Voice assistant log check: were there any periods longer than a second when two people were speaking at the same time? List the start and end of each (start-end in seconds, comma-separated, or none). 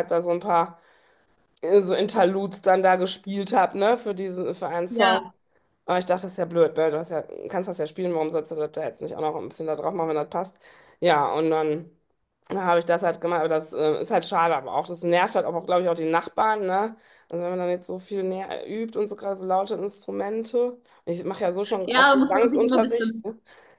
21.8-23.2